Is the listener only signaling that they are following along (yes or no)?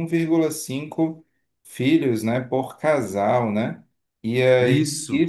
yes